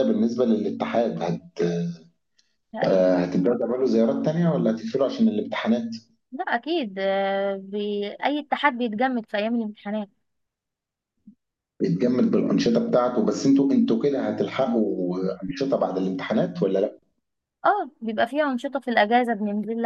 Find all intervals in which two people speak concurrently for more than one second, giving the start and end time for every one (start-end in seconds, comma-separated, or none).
none